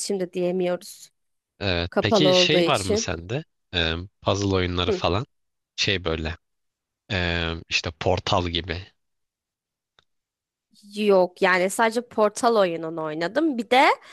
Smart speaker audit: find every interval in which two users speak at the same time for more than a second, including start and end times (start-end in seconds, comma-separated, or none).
1.9-3.1